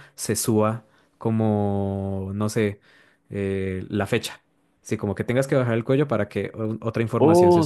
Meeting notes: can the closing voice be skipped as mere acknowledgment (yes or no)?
no